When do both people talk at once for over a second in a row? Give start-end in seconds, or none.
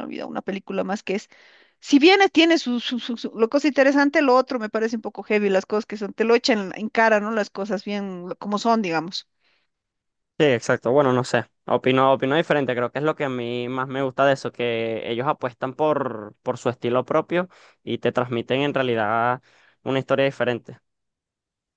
none